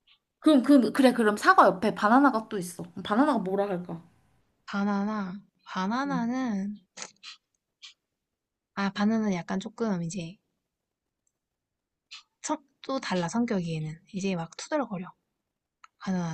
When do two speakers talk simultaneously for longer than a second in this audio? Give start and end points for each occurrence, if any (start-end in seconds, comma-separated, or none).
none